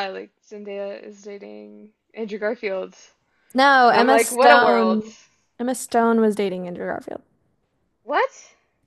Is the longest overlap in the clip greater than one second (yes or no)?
yes